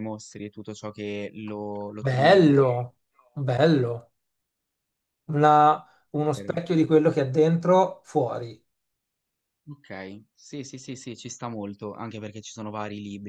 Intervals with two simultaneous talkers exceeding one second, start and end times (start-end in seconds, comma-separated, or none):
none